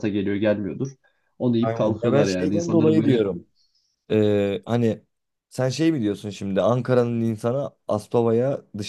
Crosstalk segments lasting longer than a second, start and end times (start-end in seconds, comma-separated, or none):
1.6-3.3